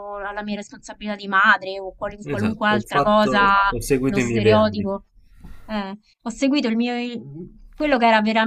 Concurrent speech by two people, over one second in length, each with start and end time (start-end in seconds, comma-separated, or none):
2.2-4.9